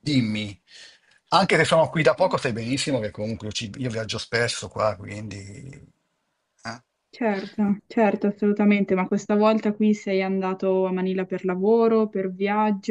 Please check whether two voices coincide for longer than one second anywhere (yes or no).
no